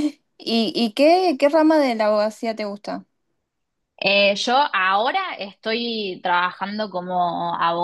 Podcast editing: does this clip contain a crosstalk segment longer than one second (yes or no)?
no